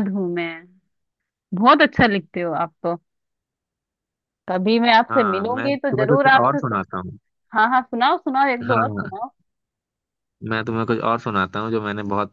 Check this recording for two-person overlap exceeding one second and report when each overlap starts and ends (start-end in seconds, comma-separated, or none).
5.1-6.8